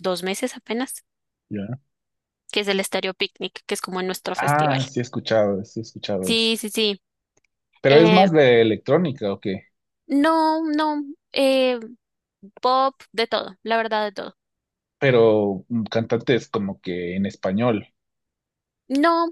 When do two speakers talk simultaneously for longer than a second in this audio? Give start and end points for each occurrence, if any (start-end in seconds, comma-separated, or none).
none